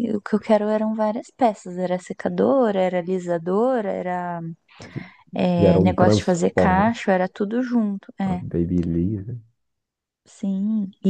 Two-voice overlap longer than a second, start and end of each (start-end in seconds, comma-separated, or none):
5.6-7.0